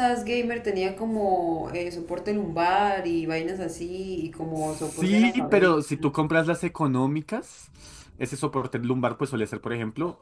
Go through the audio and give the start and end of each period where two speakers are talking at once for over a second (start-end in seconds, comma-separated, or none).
4.5-5.8